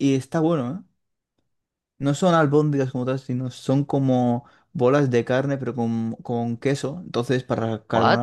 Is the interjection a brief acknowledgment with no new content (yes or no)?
no